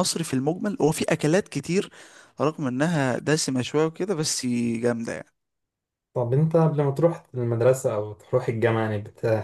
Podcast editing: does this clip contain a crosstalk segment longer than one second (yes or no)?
no